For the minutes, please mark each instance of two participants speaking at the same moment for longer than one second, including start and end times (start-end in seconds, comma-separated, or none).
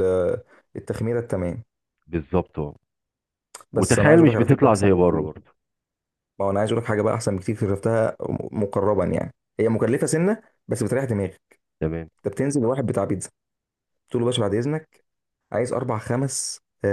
3.8-5.3